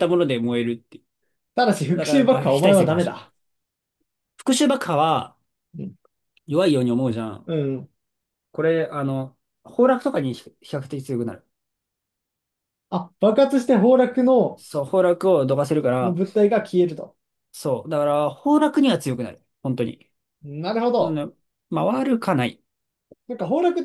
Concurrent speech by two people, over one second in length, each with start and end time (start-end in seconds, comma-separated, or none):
1.9-3.3